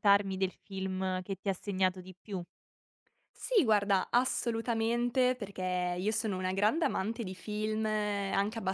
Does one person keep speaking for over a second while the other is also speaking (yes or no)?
no